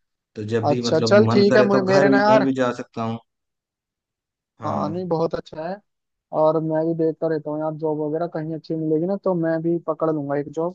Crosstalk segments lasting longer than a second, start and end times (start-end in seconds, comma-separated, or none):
0.7-2.5